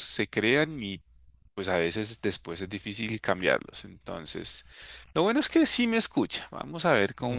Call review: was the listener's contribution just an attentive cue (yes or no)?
yes